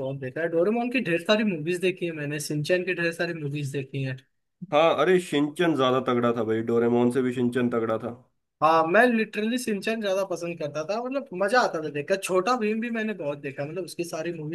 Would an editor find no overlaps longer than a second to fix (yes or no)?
yes